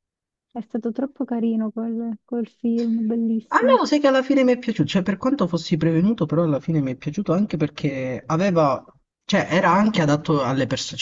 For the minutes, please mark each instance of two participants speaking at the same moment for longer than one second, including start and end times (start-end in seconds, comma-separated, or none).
none